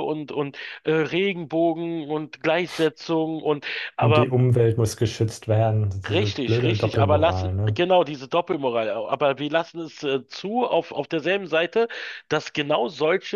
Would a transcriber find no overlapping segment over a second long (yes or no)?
no